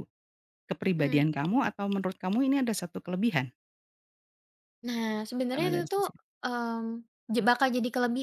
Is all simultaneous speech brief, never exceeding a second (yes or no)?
yes